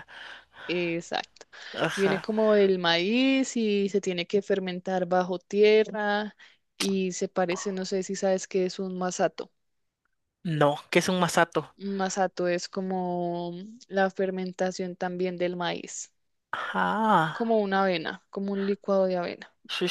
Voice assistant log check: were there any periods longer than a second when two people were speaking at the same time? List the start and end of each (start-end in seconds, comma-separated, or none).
none